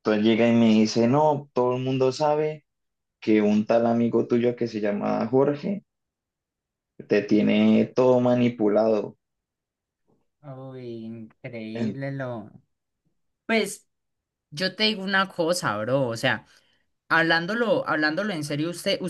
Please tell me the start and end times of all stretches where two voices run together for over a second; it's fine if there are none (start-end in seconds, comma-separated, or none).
none